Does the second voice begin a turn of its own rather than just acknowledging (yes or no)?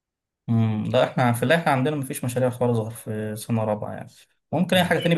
no